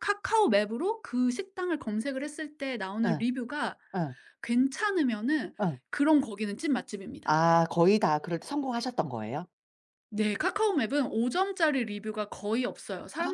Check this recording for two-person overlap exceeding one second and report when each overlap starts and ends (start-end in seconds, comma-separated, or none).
none